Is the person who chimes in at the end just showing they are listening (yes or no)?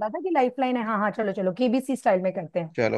no